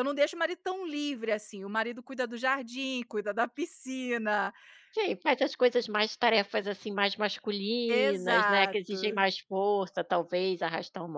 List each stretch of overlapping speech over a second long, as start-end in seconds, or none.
7.9-9.3